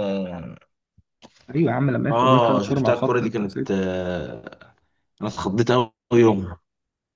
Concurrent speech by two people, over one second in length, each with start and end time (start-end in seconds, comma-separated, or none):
2.1-3.8